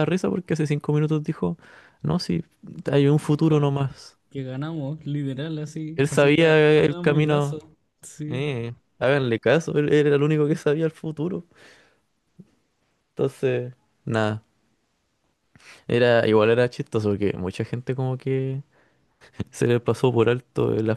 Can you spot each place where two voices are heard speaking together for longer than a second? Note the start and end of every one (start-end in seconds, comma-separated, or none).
6.0-7.6